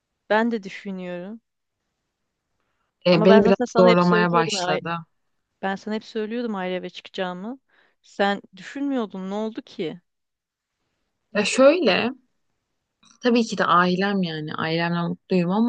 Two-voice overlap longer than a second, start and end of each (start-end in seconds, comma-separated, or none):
3.1-4.8